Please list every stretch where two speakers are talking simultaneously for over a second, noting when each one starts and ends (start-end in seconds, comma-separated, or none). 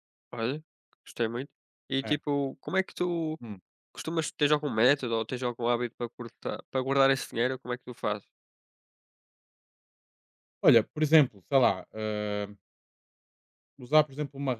none